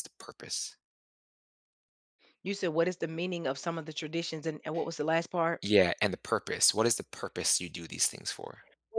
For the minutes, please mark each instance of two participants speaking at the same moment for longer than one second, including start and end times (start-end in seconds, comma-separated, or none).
none